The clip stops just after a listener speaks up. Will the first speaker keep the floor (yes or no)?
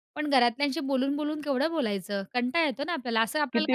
no